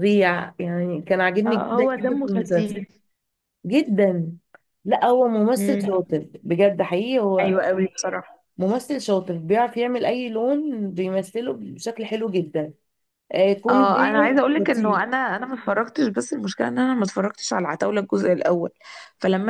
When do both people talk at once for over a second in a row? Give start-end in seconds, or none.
1.5-2.8